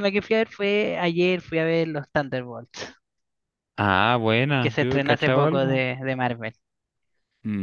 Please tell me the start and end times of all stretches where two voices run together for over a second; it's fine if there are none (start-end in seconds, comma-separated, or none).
4.6-5.8